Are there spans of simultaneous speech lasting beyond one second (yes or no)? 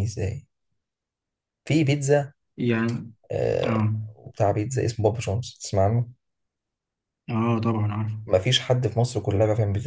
no